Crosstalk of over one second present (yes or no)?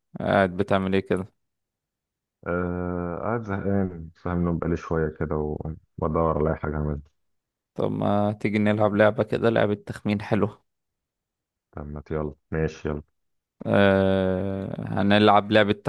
no